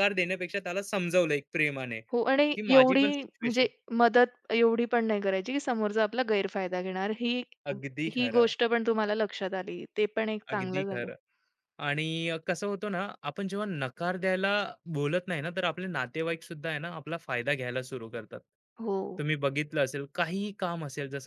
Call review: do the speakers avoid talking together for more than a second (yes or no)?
no